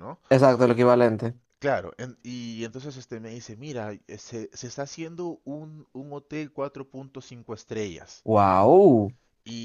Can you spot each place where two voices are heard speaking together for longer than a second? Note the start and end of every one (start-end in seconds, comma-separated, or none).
none